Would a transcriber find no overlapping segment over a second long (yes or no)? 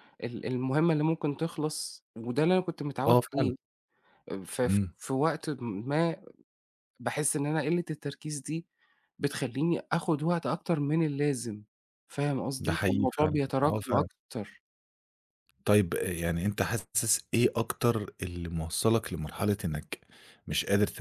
no